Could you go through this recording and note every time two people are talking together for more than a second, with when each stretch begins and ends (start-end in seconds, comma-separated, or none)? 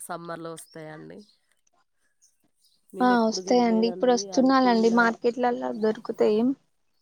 3.5-5.0